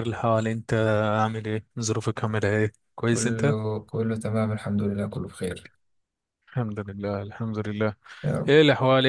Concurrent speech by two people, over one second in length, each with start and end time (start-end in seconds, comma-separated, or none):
none